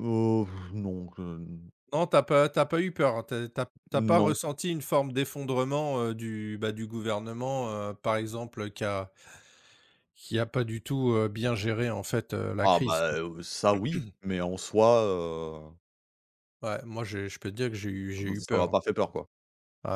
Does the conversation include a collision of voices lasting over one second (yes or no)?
no